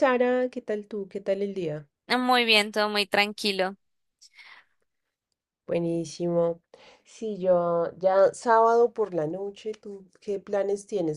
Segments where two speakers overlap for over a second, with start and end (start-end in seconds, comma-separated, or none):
none